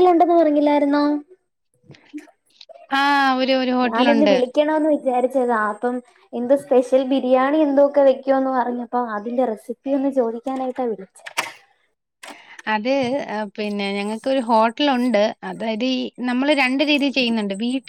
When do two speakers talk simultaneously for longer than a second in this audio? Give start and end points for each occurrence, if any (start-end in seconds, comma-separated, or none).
none